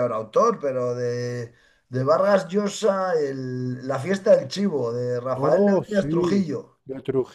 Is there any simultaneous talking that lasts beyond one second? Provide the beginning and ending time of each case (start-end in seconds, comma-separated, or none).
5.4-6.8